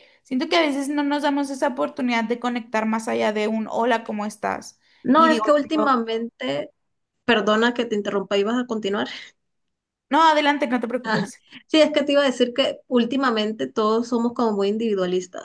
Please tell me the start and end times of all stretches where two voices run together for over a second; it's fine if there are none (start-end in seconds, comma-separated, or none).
none